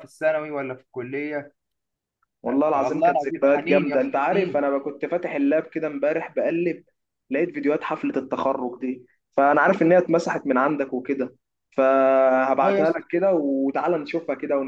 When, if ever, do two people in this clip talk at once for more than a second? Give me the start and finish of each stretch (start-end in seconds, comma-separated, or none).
2.8-4.7